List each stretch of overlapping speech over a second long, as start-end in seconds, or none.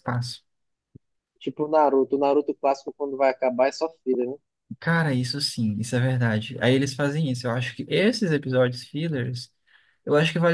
none